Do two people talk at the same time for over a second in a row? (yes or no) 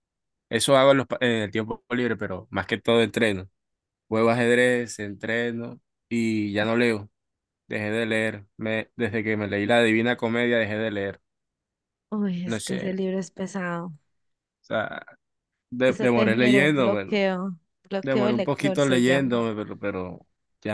yes